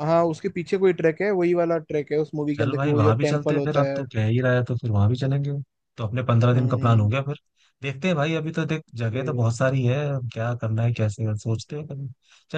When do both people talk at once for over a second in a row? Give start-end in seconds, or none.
2.5-4.0